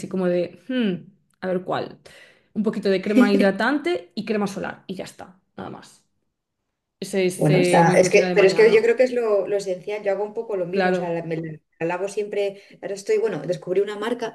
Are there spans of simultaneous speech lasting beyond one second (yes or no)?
yes